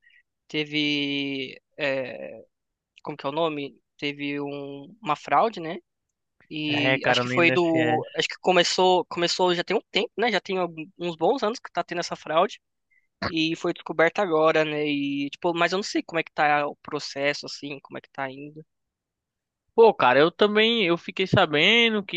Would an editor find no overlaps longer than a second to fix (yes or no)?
no